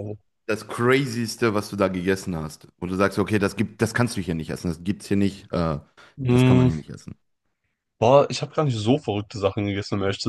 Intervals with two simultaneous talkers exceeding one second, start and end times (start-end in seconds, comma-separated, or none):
none